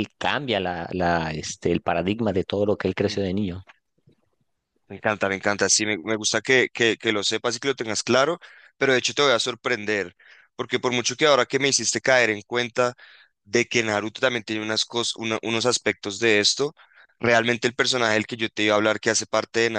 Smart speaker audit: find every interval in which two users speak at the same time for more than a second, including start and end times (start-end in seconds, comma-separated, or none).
none